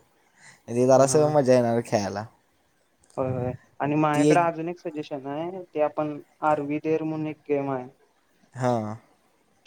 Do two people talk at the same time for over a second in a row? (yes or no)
no